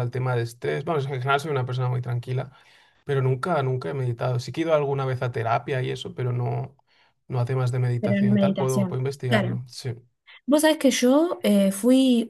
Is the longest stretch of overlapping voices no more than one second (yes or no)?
no